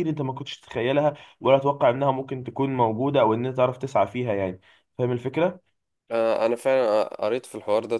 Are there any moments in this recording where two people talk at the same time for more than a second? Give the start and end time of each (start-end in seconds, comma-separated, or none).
none